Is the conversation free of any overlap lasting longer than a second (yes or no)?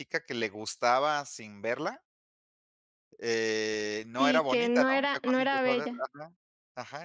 no